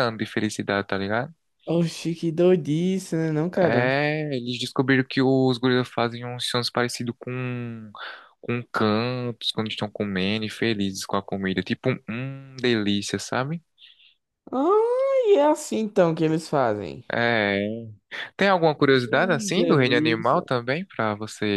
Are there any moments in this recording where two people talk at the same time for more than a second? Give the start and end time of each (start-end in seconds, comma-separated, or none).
19.1-20.4